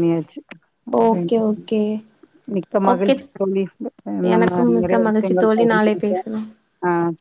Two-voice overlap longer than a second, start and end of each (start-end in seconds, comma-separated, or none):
4.3-6.3